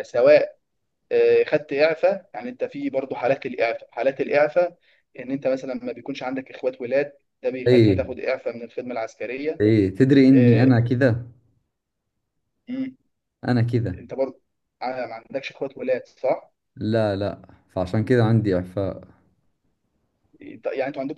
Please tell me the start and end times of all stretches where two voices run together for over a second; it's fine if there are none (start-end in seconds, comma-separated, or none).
none